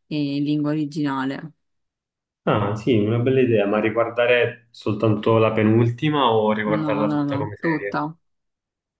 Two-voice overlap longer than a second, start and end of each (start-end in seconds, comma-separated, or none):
6.6-8.1